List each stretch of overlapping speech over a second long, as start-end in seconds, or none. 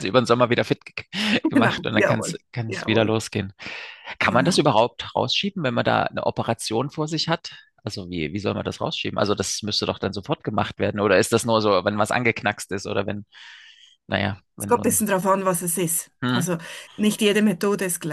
1.6-3.1